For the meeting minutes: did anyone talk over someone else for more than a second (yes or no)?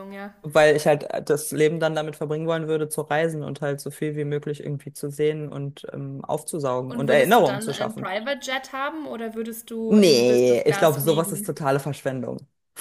yes